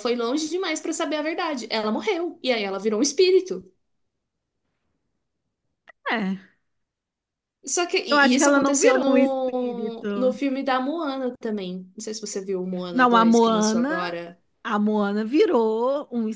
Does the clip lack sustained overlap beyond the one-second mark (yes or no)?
no